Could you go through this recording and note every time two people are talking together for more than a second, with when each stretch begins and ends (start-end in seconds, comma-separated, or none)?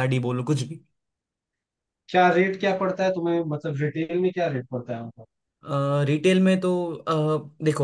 none